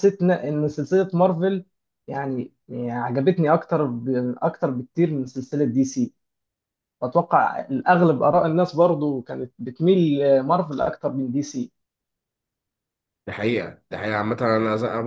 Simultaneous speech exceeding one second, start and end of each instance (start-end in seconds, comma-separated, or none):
none